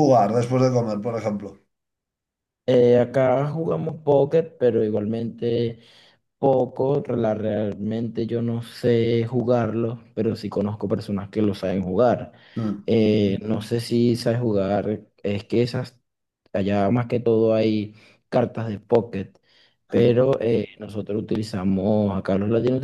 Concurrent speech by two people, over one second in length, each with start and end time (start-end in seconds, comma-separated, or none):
none